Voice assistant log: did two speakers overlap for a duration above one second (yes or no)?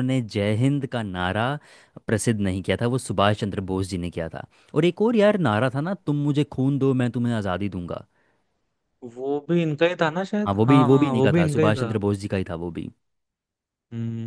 yes